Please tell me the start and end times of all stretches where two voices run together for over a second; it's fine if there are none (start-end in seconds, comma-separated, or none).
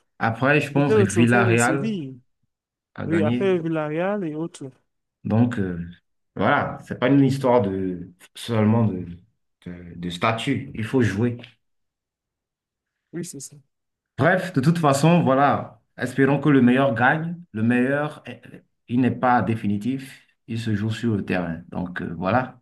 0.8-2.0